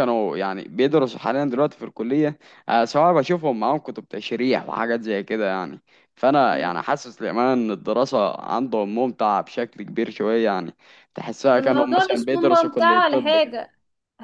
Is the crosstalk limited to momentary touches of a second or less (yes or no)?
no